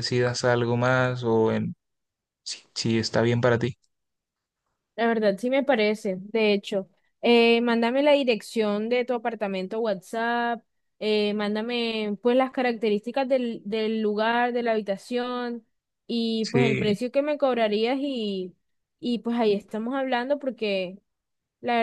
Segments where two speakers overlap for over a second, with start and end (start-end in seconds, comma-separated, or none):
none